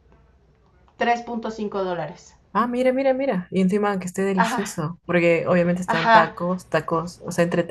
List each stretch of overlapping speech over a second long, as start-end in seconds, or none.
none